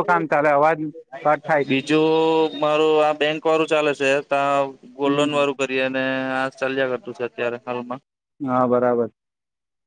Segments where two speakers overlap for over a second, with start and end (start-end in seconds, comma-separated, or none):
none